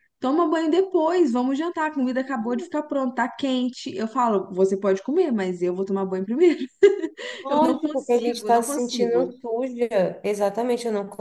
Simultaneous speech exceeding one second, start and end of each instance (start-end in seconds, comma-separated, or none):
7.5-9.3